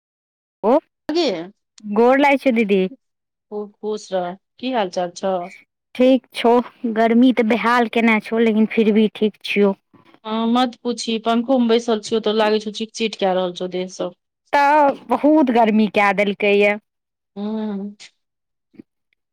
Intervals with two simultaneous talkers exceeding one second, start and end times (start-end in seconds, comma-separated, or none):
none